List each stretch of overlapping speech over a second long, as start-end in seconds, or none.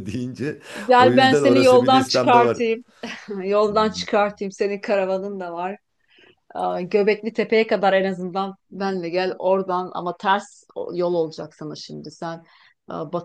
1.0-2.6